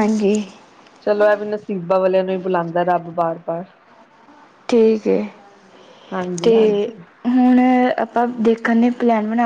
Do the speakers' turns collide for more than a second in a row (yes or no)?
no